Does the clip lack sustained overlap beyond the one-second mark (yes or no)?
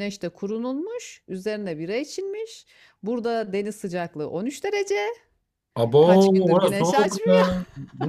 no